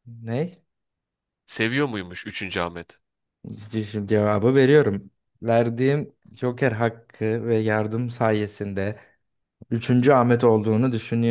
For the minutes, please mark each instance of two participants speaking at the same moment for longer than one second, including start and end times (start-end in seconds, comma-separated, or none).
none